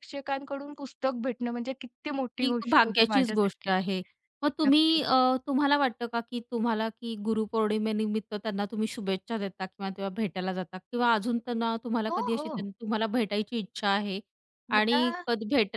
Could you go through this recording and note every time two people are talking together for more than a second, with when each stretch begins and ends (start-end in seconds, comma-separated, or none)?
2.4-3.7